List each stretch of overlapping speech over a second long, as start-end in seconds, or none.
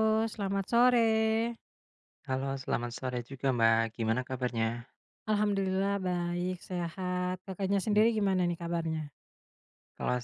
none